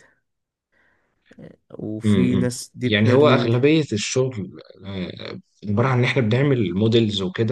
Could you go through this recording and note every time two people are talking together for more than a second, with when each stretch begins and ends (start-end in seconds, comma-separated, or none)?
2.0-3.5